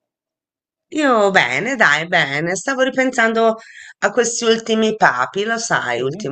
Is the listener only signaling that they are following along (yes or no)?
no